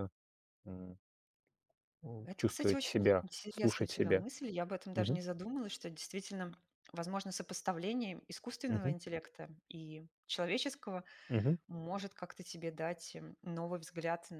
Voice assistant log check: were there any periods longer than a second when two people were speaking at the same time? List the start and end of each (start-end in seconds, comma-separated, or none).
2.2-4.2